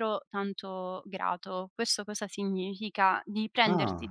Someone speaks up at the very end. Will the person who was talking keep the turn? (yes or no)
yes